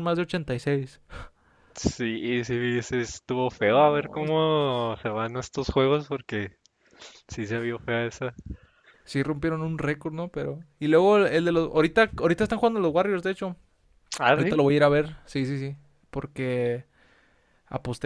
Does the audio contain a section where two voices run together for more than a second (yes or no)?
no